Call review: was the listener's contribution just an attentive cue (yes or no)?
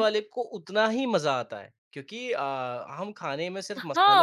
no